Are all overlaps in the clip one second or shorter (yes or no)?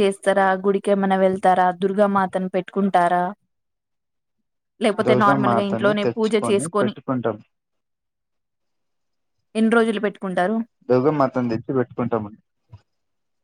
no